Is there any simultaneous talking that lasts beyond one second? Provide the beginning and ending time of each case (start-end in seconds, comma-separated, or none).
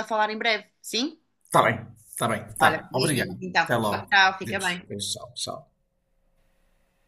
2.6-5.0